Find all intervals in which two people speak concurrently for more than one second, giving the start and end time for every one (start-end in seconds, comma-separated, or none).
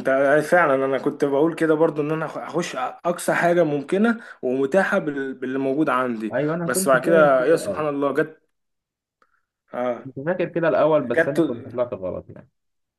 6.3-7.8